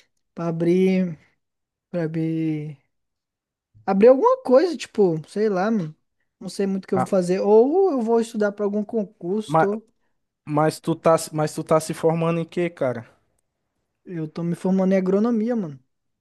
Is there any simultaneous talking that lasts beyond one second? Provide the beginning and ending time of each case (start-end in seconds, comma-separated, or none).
none